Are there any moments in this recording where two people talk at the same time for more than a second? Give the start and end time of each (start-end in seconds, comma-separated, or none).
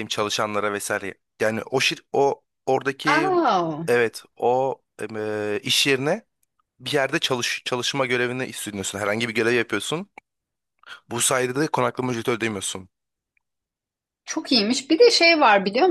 none